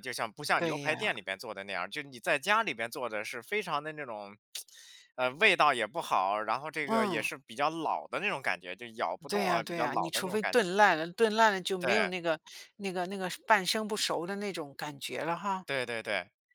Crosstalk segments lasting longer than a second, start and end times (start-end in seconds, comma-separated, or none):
9.3-10.6